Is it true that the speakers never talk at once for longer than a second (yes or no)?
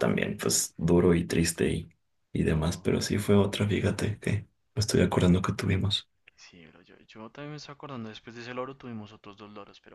yes